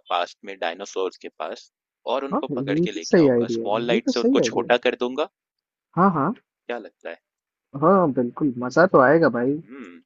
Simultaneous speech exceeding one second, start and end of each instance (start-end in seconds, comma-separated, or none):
2.3-4.8